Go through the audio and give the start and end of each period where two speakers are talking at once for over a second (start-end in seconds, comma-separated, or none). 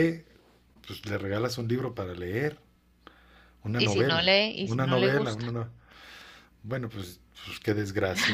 3.8-5.5